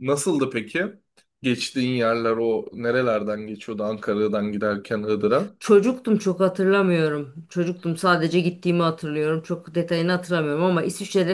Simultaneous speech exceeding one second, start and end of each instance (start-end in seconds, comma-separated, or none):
none